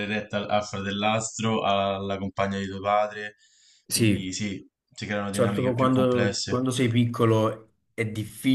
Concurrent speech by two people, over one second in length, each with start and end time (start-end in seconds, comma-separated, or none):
5.3-6.6